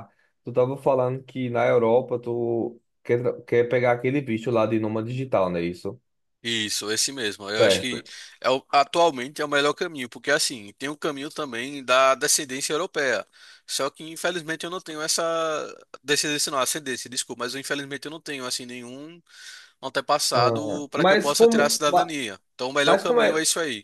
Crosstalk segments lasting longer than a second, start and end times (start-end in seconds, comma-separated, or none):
20.3-22.1